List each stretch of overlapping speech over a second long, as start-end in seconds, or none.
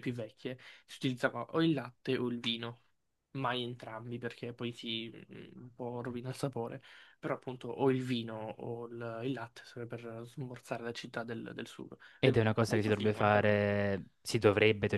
12.2-13.6